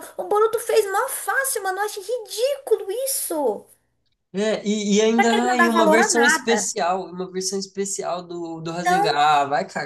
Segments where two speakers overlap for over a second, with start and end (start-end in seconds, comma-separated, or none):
5.2-6.7